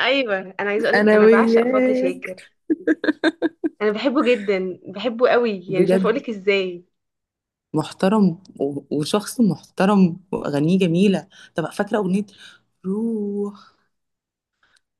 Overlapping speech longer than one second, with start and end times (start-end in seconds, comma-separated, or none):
0.9-2.4